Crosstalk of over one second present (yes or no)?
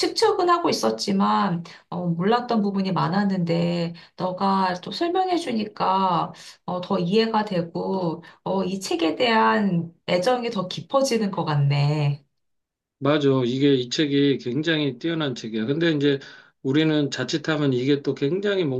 no